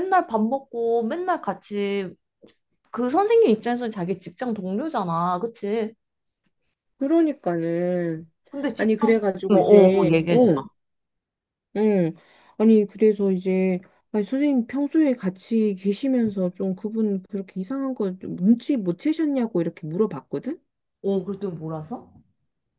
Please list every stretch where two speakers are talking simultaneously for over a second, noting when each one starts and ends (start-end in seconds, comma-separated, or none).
8.8-10.5